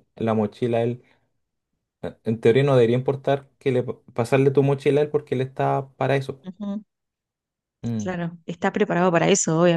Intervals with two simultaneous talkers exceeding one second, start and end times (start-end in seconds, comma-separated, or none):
none